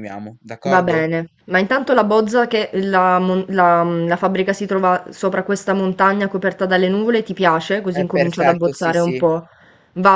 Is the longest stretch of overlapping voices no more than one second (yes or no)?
no